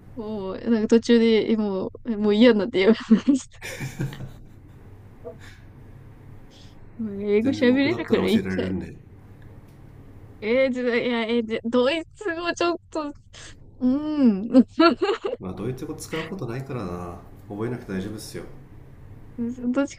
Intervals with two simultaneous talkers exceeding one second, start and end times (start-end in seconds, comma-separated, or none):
7.4-8.7